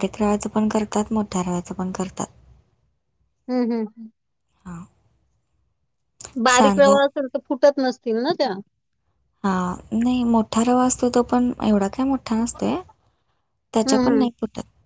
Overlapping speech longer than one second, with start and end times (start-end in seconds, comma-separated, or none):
none